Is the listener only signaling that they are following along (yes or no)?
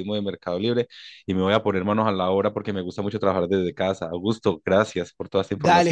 no